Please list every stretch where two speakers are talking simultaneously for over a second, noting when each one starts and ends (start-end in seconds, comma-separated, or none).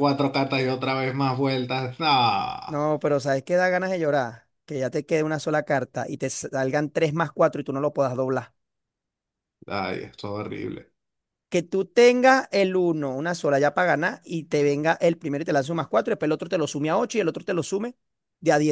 none